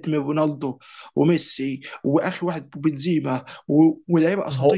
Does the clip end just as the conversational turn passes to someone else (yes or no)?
no